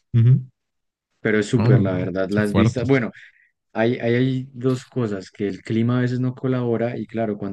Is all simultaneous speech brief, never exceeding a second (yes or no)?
no